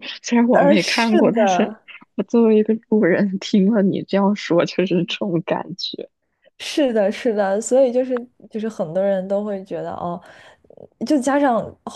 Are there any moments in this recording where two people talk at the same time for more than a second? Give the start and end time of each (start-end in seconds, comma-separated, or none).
0.5-1.7